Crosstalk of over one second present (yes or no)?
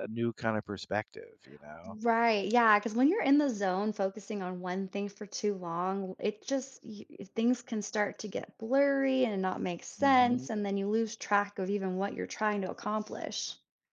no